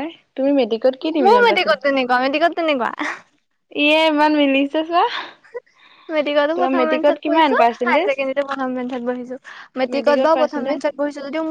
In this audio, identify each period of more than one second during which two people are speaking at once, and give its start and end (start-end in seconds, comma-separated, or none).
6.5-8.1